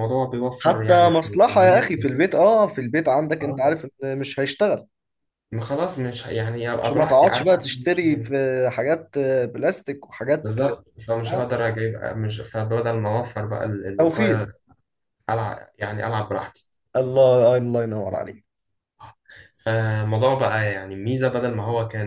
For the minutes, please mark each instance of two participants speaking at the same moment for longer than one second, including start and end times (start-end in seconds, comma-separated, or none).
0.6-1.9, 6.8-8.3